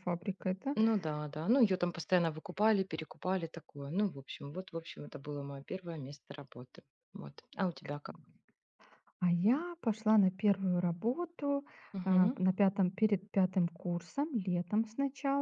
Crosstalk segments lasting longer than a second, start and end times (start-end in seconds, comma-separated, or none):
none